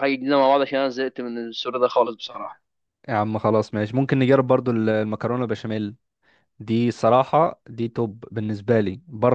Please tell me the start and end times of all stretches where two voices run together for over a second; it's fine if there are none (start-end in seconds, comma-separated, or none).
none